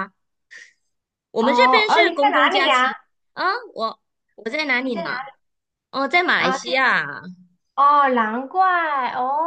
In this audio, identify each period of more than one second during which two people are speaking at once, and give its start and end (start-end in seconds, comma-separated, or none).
1.4-2.9